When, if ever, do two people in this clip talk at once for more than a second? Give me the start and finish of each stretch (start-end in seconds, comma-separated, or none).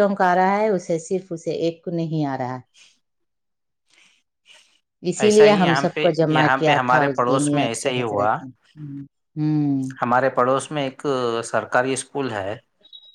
6.3-8.3